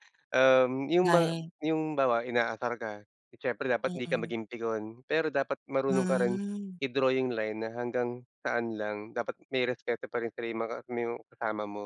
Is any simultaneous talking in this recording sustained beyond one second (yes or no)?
no